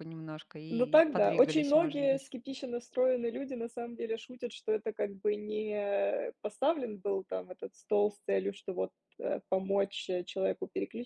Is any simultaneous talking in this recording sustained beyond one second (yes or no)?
yes